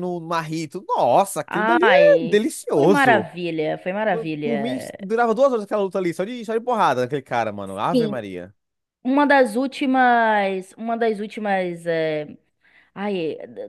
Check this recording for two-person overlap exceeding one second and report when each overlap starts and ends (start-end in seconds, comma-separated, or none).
1.5-3.3